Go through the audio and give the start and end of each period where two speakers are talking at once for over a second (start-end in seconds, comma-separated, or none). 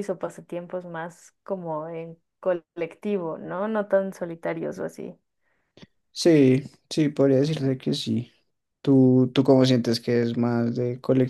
none